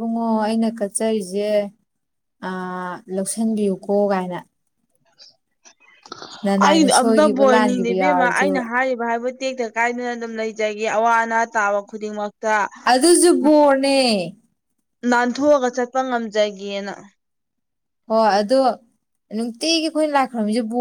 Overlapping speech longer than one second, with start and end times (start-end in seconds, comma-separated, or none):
6.7-8.5